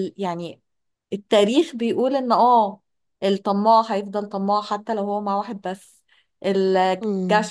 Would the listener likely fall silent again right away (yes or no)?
yes